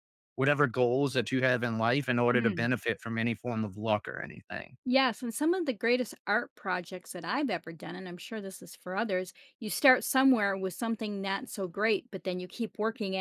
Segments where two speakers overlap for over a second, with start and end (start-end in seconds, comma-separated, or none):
none